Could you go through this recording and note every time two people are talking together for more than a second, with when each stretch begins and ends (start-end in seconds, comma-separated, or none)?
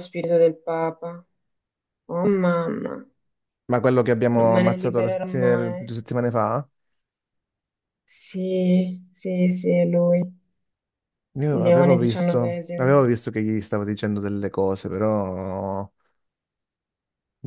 4.3-5.8, 11.6-12.9